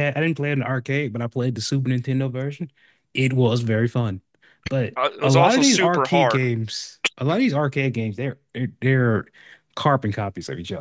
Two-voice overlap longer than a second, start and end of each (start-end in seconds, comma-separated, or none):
5.0-6.5